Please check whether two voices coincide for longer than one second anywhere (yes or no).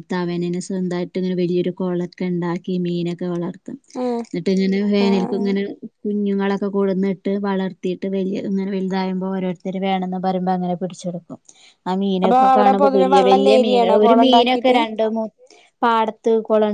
yes